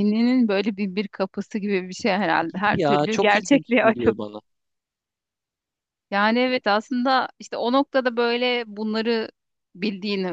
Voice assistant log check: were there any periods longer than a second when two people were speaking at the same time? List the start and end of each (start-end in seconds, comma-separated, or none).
2.5-4.1